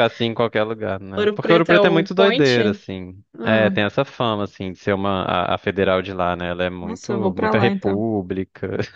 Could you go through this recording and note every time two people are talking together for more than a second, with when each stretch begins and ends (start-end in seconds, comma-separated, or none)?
1.2-2.6, 6.8-8.0